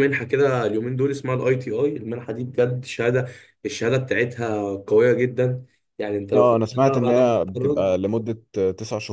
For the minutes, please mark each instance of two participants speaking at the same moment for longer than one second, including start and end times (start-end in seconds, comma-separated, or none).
6.3-7.9